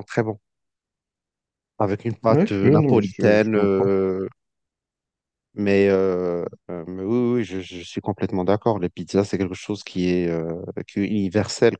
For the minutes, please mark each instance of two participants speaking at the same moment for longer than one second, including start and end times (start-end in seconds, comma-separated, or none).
2.3-4.0